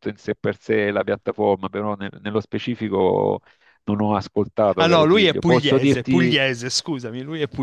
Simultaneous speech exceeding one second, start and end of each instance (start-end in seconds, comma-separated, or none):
4.8-6.4